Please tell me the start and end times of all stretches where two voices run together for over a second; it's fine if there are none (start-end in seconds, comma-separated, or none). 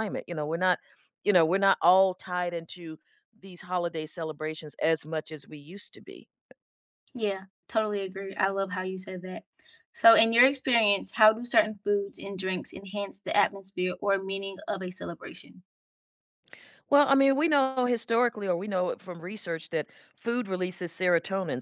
none